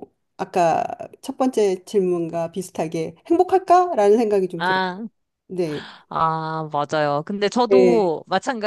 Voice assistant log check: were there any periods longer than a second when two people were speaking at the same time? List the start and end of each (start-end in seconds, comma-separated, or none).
none